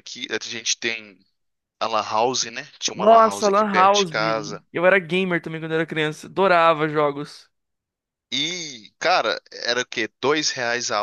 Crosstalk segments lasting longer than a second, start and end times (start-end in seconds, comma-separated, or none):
2.9-4.1